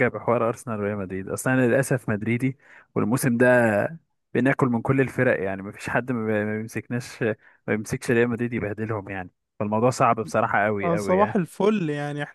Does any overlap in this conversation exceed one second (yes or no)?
no